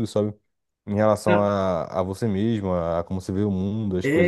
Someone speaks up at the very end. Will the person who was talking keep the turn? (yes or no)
no